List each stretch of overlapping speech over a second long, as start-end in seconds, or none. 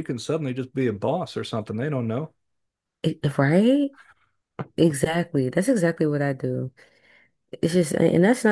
none